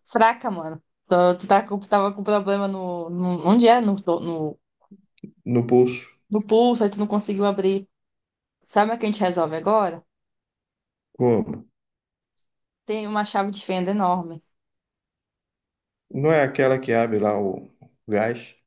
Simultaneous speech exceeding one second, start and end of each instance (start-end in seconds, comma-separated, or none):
none